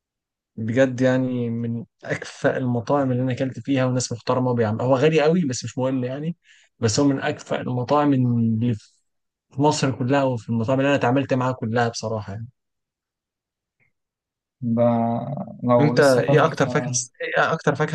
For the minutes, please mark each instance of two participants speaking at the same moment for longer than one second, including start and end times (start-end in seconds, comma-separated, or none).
15.8-17.0